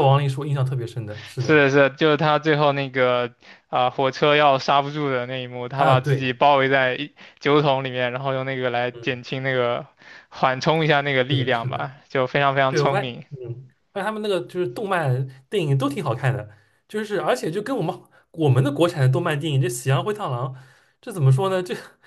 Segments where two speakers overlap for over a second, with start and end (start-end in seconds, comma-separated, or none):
none